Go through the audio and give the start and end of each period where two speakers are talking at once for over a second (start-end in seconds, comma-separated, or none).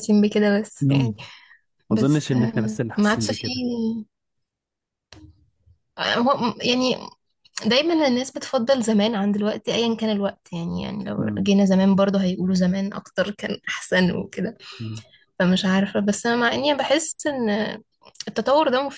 1.9-3.6